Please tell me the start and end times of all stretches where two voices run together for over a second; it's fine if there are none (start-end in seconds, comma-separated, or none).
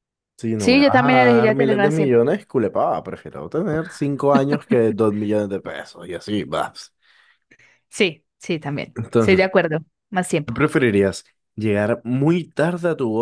0.6-2.2